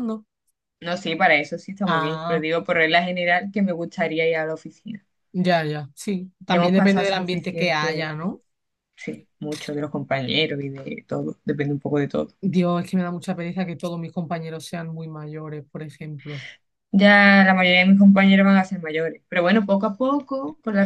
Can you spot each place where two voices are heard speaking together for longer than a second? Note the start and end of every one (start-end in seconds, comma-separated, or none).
6.5-8.1